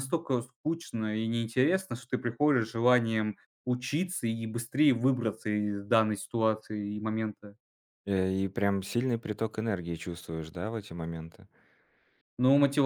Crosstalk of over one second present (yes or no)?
no